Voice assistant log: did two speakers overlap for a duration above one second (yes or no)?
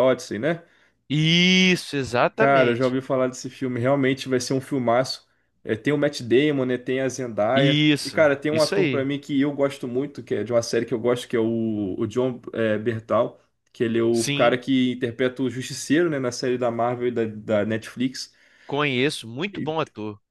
yes